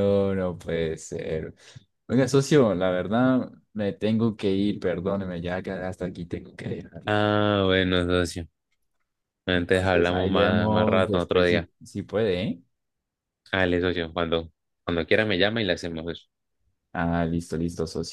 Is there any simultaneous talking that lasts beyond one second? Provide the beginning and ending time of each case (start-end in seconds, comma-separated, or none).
9.5-11.7